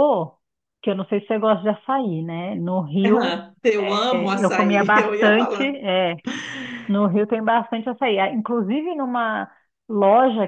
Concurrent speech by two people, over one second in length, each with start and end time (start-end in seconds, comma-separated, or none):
4.1-5.7